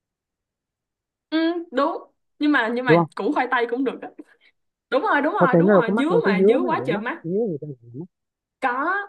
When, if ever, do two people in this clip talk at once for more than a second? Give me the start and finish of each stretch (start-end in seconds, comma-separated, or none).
5.4-7.2